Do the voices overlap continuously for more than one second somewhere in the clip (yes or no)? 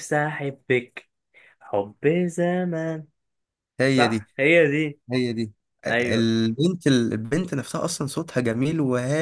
no